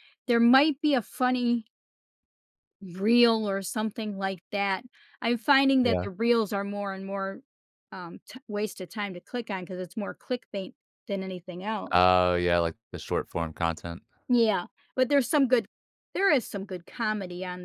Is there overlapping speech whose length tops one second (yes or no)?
no